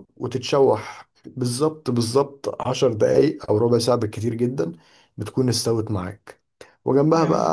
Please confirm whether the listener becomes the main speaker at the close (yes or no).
no